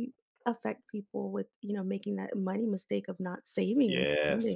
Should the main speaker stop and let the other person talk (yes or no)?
yes